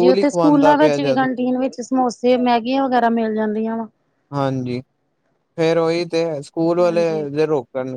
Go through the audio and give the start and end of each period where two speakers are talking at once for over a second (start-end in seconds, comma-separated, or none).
none